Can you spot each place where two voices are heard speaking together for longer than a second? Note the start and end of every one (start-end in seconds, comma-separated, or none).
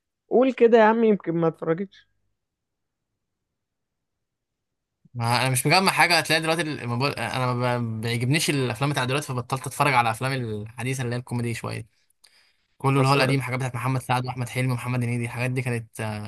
none